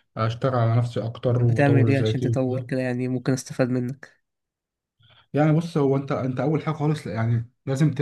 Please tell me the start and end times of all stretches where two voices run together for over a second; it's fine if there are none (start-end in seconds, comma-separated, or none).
1.3-2.7